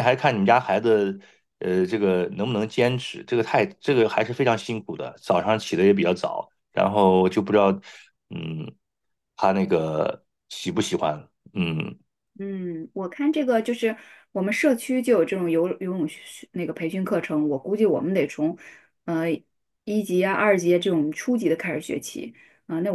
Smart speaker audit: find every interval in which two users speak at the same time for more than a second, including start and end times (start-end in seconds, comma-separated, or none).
none